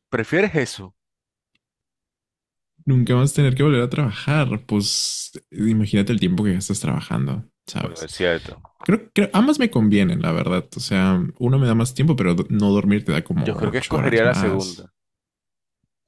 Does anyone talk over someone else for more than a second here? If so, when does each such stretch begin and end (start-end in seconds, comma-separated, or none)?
13.4-14.9